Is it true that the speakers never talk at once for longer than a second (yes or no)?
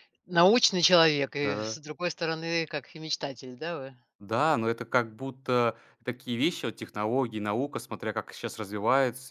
yes